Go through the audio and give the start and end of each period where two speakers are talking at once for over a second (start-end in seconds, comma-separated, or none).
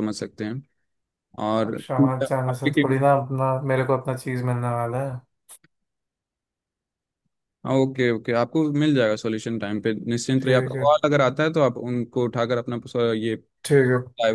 1.6-3.0